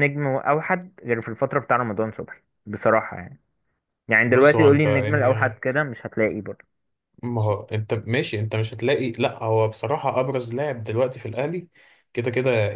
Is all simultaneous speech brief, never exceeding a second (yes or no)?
no